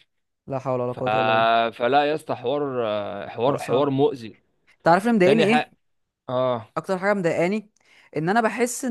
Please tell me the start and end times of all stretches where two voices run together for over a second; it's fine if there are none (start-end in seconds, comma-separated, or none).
none